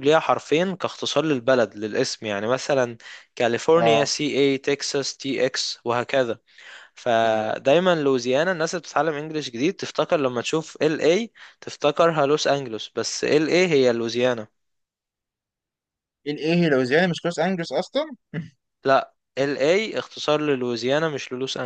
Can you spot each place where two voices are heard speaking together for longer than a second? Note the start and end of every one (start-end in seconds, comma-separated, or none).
none